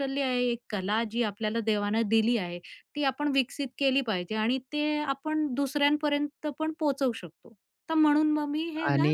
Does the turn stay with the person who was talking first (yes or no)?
no